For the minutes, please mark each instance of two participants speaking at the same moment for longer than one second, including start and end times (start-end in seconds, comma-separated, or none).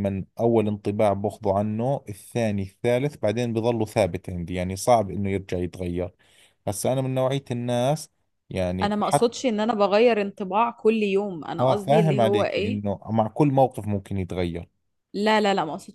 11.6-12.8